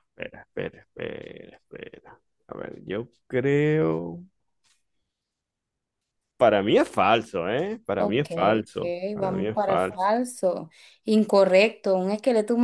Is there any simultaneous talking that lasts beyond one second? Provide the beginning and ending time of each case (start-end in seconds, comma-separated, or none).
8.0-10.1